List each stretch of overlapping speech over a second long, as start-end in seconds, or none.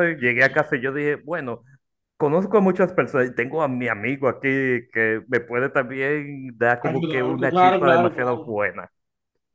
6.8-8.5